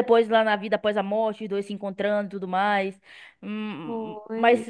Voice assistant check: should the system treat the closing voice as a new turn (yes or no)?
no